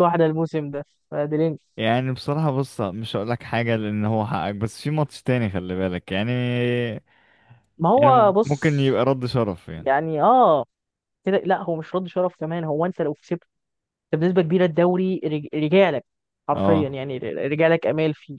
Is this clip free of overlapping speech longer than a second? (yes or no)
yes